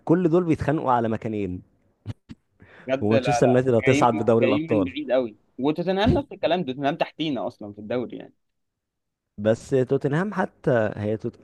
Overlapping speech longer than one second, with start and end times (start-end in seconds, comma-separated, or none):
3.0-4.9